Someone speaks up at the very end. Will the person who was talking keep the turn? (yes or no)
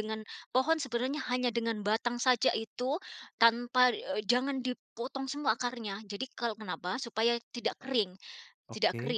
yes